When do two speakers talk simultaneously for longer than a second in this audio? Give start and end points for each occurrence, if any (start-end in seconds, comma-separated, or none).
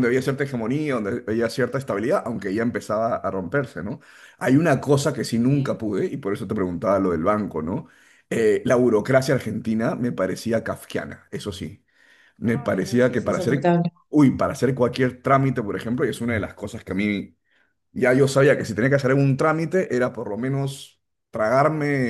12.4-13.7